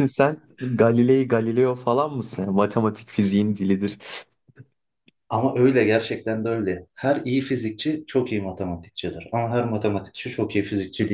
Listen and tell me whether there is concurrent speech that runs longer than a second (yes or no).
no